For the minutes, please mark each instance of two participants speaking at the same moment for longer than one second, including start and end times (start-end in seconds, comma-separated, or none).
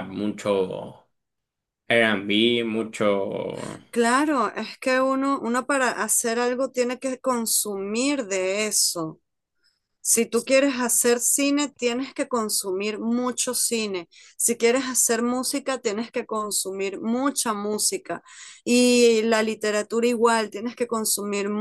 none